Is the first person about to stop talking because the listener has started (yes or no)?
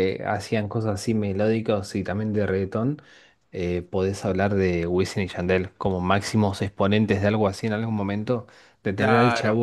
no